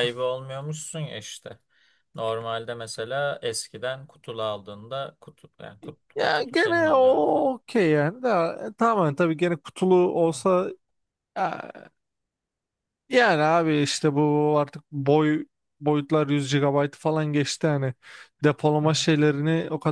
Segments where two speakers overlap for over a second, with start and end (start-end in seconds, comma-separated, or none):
6.2-7.5